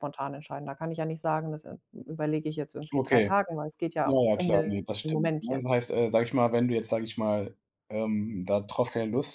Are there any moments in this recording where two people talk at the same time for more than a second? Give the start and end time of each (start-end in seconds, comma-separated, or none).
4.0-5.8